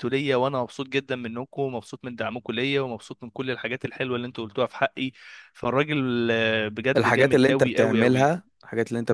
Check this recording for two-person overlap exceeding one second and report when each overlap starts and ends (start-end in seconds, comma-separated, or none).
7.0-8.3